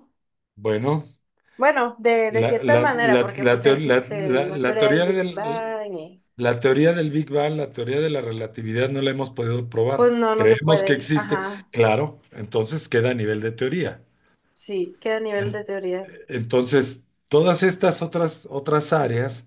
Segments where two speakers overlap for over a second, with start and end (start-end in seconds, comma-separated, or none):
2.3-5.8, 9.9-11.7